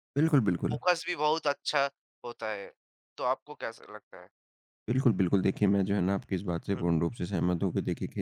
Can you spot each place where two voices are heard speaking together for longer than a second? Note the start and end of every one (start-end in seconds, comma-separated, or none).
none